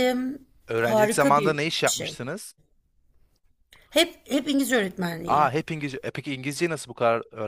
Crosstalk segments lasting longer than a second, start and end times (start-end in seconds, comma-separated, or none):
0.7-2.2